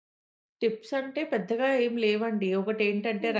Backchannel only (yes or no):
yes